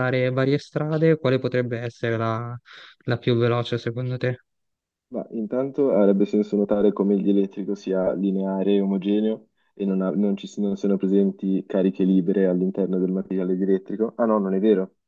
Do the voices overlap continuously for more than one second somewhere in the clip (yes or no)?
no